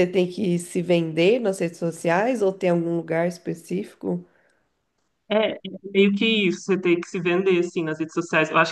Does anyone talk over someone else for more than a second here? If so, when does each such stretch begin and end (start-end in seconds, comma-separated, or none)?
none